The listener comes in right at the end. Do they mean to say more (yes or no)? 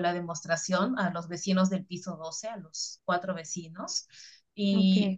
no